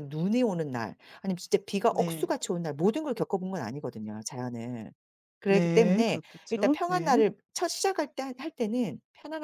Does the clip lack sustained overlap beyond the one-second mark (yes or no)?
no